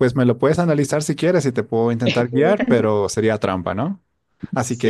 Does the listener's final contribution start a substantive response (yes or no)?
yes